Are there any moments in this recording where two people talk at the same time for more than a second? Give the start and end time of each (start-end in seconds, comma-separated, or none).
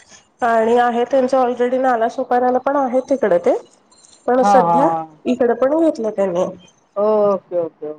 none